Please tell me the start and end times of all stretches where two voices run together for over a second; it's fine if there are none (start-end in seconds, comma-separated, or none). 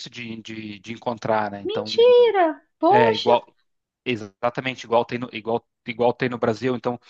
none